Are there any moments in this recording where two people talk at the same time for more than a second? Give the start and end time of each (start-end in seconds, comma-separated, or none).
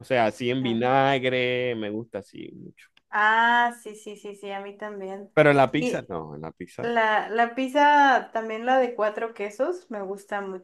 none